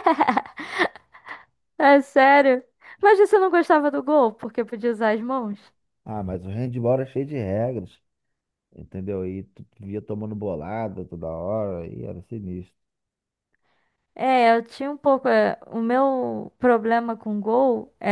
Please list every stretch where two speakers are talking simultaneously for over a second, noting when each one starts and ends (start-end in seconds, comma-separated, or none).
none